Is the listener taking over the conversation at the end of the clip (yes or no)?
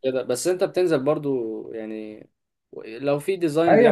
yes